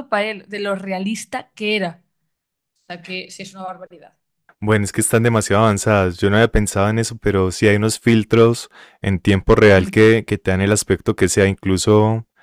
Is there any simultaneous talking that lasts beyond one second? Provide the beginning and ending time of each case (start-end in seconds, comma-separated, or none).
none